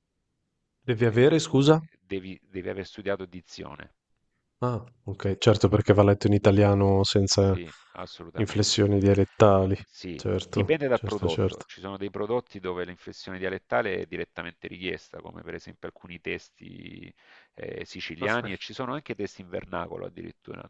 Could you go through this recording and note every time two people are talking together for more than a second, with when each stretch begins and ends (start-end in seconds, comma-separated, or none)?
10.1-11.6